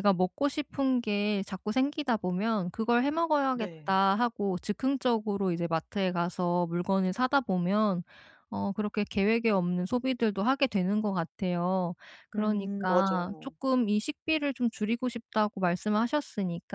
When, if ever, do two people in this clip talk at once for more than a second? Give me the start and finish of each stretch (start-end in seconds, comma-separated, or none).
12.3-13.5